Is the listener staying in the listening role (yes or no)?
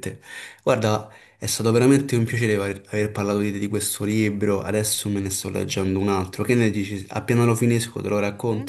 no